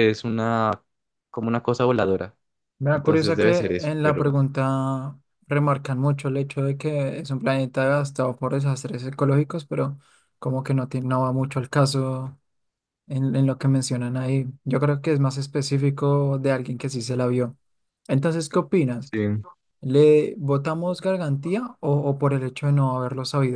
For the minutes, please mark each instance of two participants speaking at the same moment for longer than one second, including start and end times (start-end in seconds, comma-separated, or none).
2.9-4.4